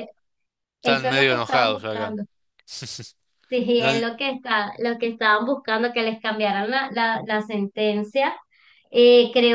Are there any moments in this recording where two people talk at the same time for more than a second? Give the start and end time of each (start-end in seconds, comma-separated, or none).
0.8-2.2